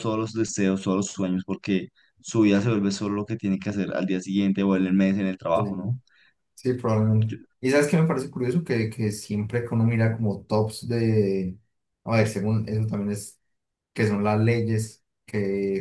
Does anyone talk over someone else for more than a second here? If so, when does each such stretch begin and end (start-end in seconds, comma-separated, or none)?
none